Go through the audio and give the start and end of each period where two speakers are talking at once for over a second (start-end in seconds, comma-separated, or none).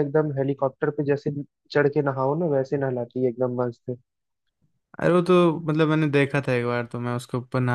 none